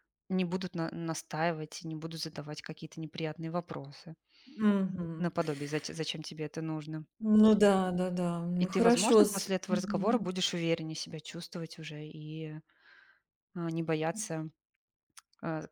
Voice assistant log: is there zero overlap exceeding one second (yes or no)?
no